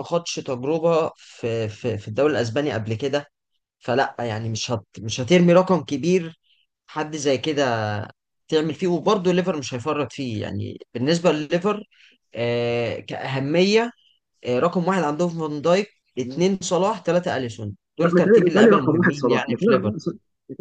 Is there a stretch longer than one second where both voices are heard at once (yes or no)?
yes